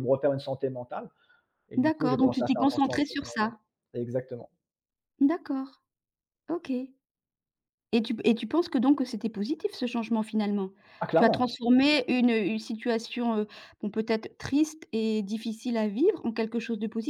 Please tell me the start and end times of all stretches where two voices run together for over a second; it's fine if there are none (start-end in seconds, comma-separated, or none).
1.8-3.5